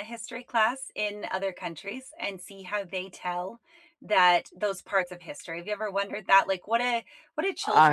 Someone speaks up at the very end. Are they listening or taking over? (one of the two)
listening